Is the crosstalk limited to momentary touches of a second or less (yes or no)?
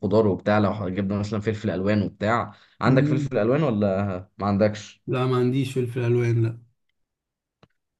yes